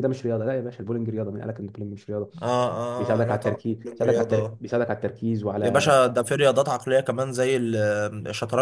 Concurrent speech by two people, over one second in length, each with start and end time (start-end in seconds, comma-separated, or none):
3.0-4.6